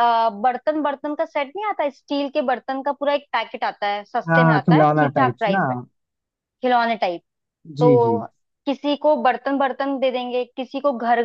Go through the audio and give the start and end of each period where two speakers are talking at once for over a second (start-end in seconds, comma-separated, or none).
4.3-5.6